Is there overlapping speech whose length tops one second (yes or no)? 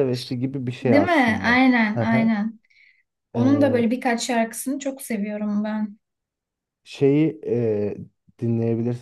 yes